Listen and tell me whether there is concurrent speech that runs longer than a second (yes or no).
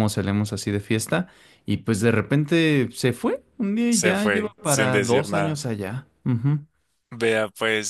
yes